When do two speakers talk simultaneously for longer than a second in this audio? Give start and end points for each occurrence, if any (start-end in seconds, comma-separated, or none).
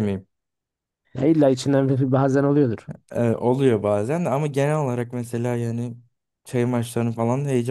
none